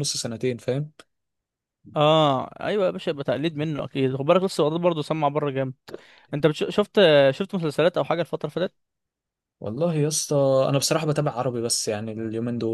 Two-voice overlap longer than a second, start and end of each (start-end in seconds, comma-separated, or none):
none